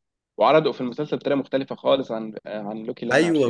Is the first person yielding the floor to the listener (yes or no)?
yes